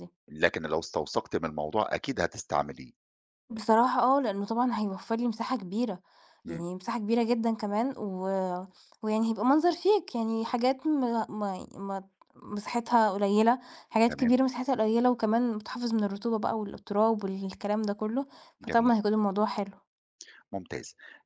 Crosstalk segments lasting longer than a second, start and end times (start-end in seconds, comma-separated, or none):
none